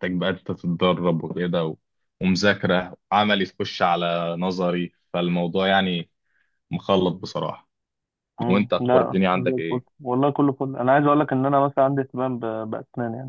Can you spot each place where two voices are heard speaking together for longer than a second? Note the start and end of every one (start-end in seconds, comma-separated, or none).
8.5-9.8